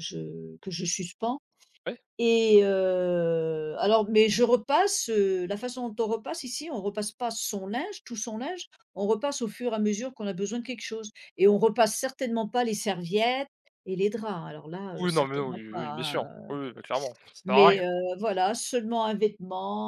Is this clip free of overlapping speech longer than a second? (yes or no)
no